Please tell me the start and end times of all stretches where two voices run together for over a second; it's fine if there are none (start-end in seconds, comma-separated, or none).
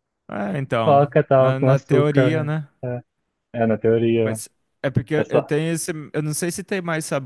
0.8-2.7